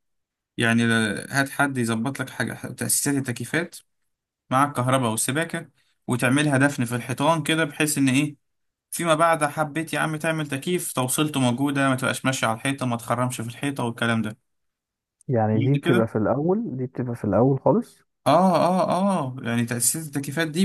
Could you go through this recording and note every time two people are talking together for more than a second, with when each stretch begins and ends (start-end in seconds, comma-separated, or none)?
none